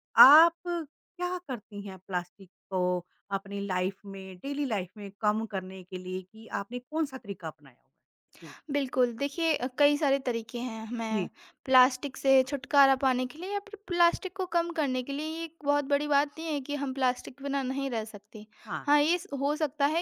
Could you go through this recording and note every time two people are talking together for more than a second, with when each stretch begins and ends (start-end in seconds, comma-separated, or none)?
none